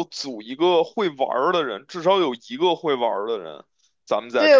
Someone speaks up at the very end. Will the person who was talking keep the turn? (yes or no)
no